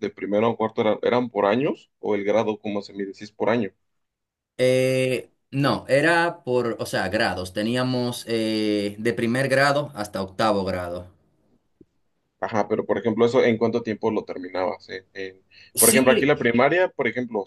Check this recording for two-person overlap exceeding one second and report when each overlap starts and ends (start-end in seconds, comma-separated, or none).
none